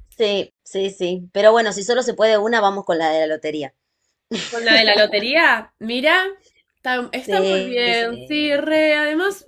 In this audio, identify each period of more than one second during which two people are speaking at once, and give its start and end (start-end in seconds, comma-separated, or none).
7.3-8.7